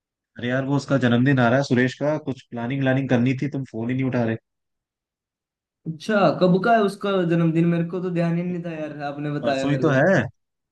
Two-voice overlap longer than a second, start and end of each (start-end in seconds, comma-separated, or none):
none